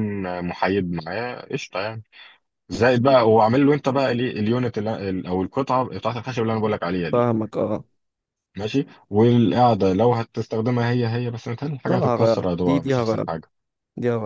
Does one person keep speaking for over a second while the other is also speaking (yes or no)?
yes